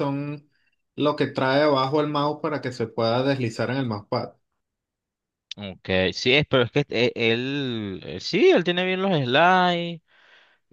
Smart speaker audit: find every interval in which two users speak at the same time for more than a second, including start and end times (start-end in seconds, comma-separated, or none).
none